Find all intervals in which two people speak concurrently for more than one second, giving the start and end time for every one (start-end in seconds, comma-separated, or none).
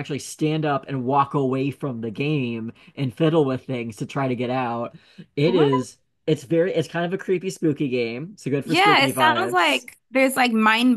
8.7-9.8